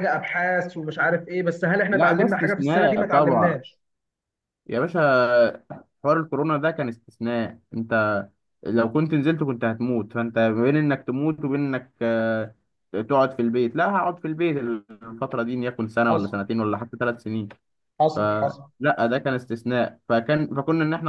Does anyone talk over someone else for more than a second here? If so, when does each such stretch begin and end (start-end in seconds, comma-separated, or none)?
1.9-3.6